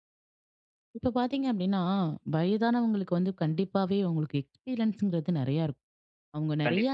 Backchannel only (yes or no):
yes